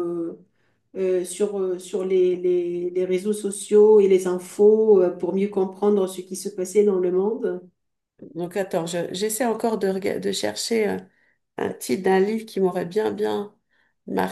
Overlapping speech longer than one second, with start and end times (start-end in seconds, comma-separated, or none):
none